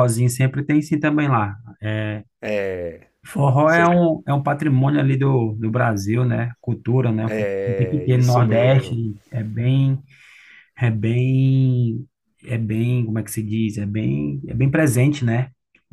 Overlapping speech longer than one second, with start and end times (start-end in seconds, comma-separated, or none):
7.2-9.0